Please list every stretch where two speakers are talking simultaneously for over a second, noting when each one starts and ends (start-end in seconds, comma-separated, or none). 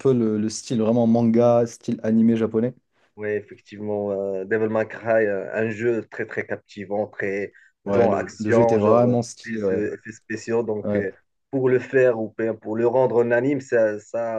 7.9-9.9